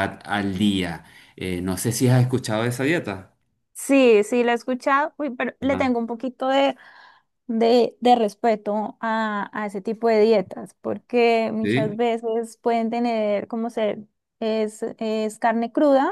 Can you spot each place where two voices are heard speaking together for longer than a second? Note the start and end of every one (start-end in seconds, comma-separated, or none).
none